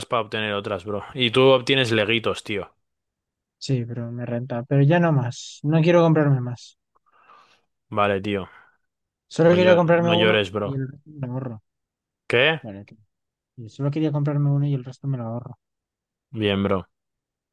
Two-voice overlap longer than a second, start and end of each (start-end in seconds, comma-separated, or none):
9.5-10.8